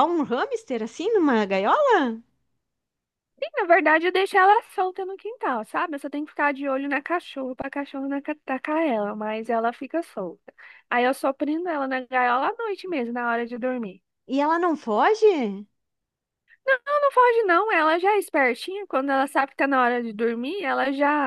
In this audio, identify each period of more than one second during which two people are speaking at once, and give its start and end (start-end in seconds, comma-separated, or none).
none